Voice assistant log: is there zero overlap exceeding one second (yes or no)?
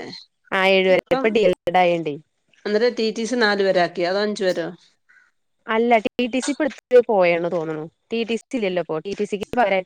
yes